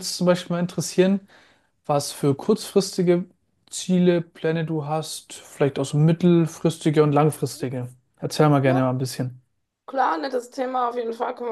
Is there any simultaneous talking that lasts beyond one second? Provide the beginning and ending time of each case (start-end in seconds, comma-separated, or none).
none